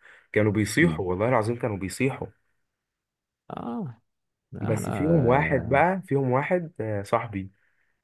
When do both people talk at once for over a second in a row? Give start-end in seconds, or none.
4.6-5.8